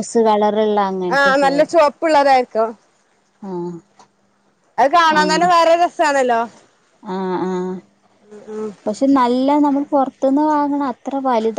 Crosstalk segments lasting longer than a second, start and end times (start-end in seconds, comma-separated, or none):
none